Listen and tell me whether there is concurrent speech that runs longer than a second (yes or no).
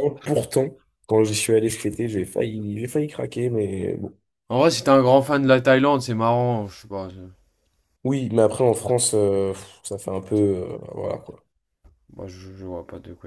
no